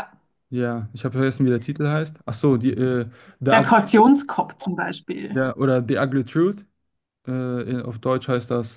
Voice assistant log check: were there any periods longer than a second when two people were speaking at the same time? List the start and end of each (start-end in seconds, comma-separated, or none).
none